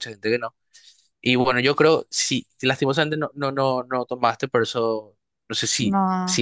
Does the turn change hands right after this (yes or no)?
no